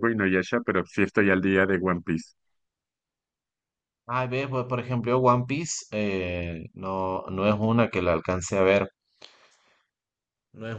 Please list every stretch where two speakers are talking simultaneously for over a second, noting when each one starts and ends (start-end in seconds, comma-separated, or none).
none